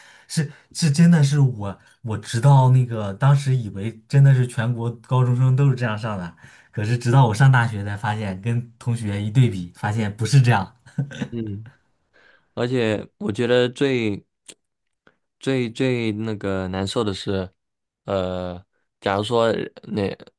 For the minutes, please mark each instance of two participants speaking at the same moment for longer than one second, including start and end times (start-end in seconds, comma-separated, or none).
none